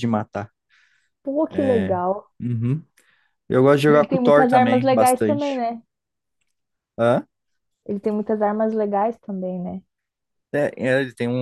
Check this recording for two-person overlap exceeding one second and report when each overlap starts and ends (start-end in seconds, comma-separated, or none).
3.9-5.6